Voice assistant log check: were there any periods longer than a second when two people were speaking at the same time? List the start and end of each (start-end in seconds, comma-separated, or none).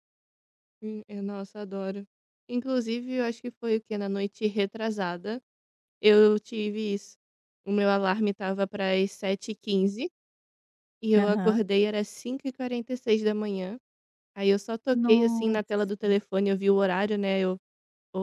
14.9-16.1